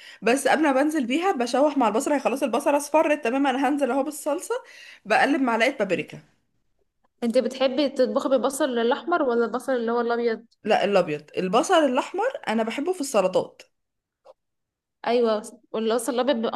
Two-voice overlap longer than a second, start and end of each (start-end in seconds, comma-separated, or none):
none